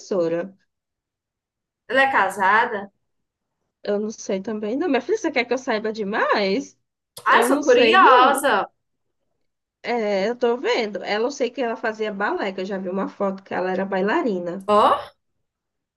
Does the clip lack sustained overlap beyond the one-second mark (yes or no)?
no